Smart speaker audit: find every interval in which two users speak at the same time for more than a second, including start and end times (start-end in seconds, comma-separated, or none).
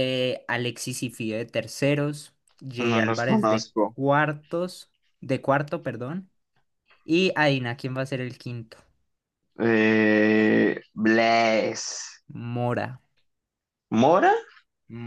2.8-4.0